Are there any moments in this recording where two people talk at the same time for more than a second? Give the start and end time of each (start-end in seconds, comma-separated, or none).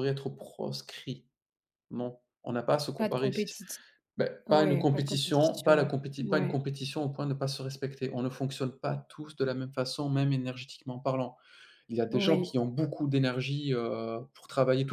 4.5-6.6